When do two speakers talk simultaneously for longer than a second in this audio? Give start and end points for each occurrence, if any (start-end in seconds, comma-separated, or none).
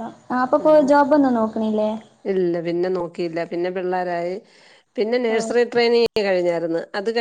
none